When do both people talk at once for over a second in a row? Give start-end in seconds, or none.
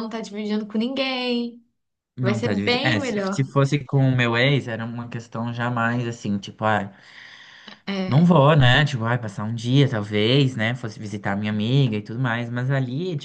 2.2-3.5